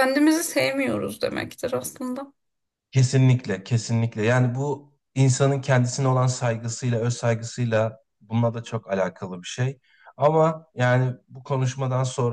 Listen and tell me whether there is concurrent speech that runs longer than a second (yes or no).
no